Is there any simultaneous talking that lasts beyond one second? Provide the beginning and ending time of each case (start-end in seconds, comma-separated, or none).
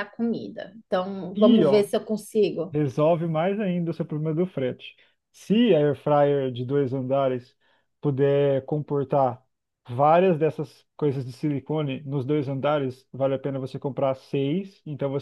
none